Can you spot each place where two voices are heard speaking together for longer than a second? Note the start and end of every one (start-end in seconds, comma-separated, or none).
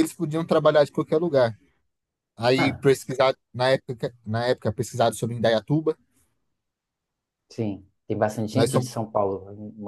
none